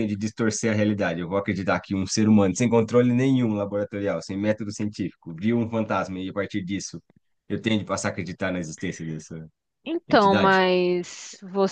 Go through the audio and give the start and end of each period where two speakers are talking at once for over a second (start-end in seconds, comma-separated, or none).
none